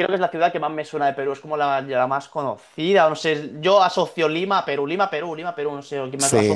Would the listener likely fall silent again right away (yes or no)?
no